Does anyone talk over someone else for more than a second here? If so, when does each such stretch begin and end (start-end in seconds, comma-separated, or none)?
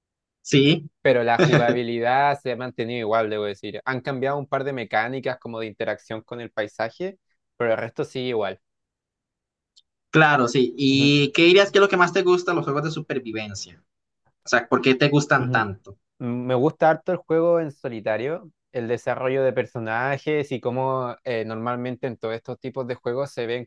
none